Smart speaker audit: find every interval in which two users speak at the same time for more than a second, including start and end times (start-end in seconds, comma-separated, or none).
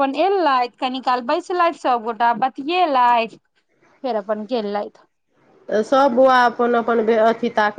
none